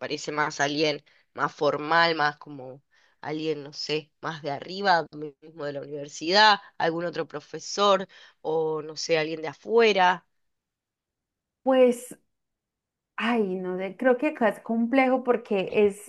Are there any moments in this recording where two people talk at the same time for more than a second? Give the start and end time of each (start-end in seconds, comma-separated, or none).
none